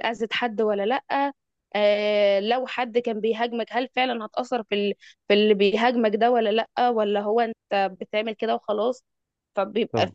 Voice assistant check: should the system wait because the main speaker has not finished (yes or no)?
yes